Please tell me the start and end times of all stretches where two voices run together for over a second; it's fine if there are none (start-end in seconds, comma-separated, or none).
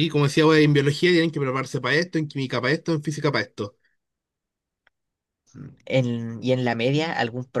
none